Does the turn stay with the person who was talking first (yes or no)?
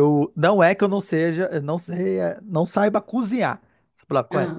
yes